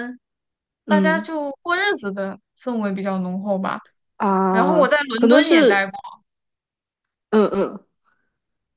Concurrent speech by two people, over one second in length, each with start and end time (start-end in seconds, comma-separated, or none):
4.5-5.9